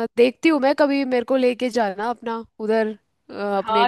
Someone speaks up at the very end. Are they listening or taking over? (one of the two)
taking over